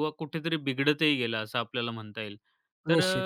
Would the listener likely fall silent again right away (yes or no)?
yes